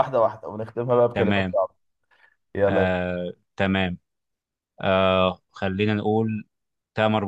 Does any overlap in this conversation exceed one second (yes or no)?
no